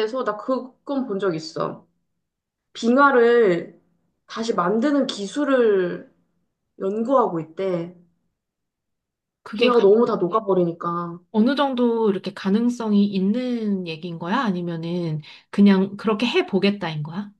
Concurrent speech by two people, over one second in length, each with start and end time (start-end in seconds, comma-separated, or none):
none